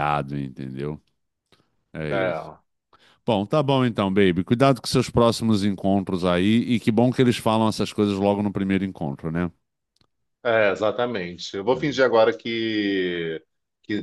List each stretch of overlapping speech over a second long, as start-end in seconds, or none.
none